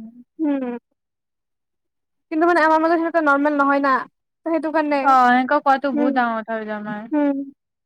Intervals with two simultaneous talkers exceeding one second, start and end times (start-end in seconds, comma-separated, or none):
none